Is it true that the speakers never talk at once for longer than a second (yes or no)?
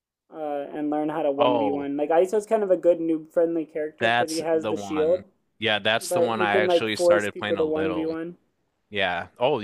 no